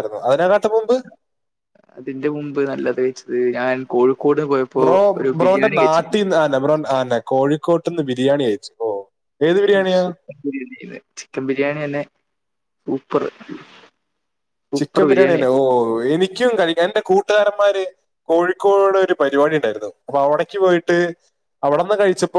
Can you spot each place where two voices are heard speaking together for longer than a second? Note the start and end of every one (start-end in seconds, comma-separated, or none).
none